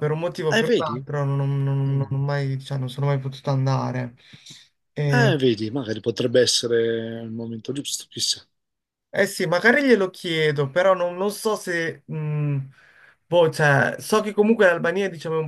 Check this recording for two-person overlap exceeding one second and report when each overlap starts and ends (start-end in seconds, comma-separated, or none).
none